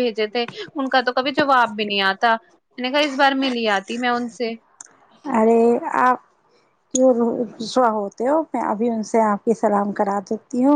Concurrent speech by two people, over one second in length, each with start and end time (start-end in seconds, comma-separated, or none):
none